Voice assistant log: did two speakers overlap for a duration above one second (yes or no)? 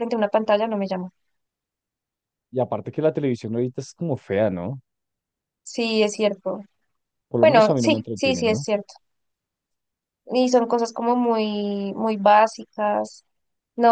yes